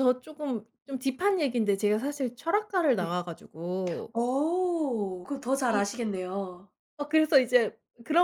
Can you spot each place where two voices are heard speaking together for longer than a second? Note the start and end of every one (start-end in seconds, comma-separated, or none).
none